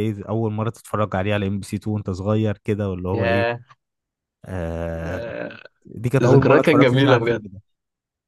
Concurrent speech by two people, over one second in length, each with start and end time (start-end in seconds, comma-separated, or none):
6.2-7.4